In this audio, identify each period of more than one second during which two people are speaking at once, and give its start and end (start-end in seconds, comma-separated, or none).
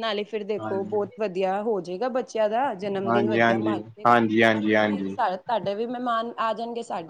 3.1-5.2